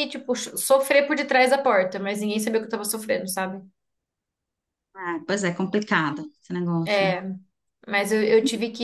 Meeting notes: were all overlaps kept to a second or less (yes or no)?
yes